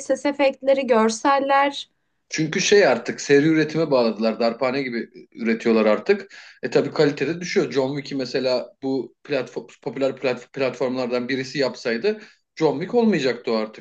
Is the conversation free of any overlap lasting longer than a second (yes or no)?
yes